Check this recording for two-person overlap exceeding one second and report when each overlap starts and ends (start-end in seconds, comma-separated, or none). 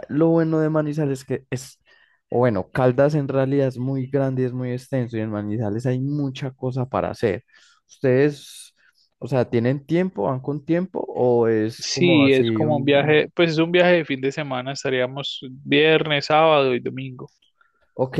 11.8-13.2